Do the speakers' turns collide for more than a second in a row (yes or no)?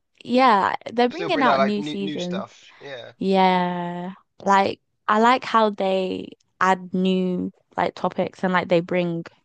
yes